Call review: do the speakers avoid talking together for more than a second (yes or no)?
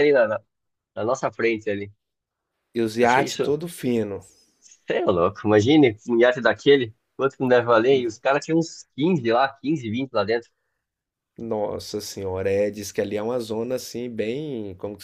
yes